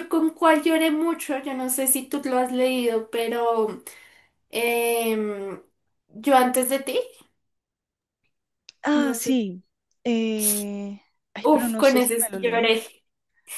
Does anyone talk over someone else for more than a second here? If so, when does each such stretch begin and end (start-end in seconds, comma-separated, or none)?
11.4-12.7